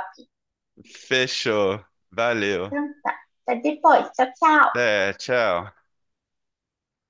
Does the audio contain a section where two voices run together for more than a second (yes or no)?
no